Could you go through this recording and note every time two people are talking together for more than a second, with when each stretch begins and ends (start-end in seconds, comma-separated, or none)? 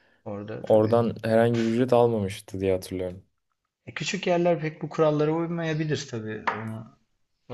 none